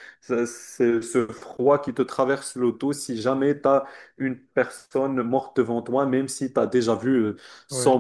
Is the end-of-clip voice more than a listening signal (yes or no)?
no